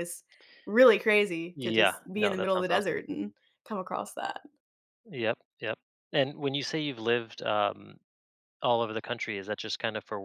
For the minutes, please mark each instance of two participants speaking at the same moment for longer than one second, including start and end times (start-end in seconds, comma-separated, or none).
1.6-3.0